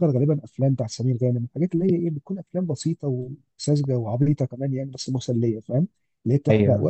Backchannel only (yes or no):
yes